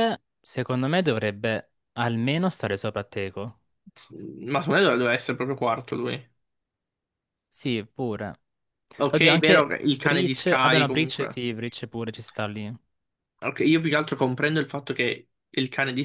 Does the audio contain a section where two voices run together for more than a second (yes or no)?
yes